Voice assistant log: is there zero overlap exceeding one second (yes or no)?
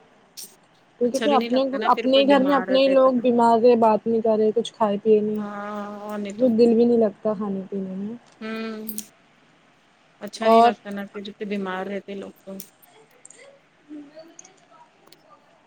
no